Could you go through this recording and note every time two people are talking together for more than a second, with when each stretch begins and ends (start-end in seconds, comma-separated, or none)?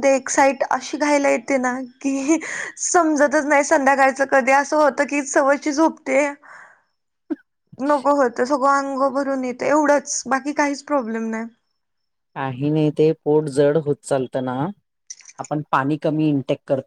none